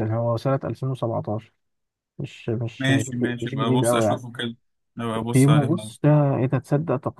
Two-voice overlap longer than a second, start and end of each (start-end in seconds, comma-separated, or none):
2.8-4.2